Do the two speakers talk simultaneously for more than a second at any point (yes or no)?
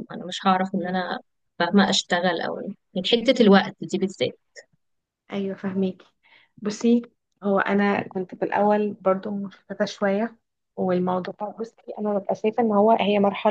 no